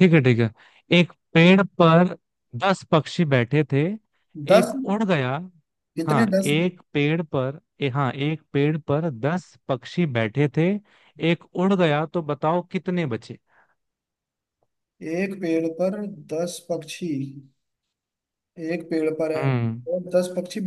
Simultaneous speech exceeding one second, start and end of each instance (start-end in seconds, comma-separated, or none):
none